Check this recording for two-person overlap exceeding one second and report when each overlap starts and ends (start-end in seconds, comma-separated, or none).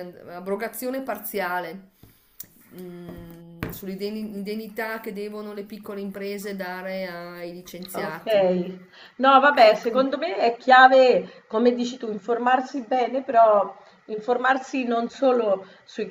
none